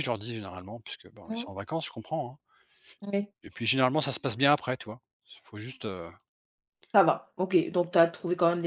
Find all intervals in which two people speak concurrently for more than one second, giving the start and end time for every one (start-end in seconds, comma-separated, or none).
none